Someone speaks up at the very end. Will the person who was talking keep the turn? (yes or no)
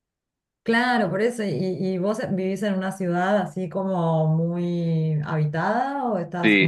no